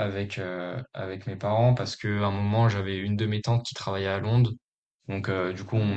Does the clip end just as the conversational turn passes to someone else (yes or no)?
no